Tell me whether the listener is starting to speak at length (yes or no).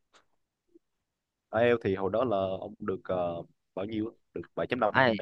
yes